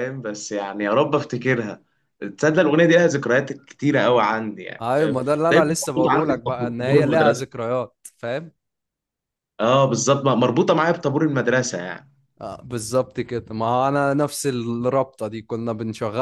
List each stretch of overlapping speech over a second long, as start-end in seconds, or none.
4.8-7.4